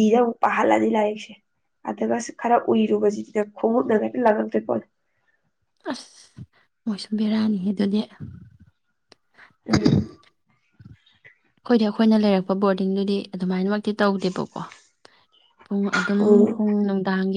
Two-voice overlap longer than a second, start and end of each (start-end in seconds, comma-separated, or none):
none